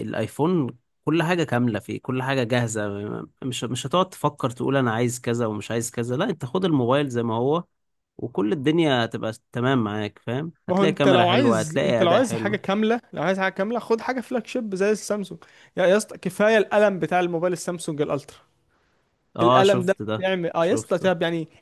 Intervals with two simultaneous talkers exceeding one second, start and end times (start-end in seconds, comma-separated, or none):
10.7-12.6, 19.4-21.1